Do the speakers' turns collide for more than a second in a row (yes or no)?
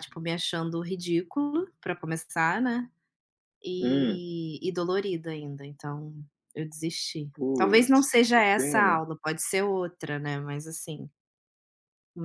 yes